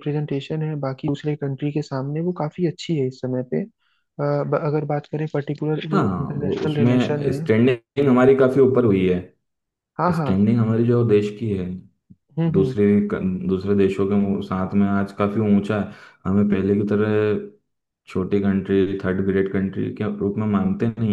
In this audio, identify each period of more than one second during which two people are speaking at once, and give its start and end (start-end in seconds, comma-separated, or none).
5.9-7.4